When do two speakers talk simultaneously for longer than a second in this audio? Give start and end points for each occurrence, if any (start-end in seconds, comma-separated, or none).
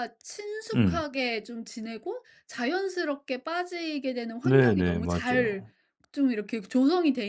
4.4-5.7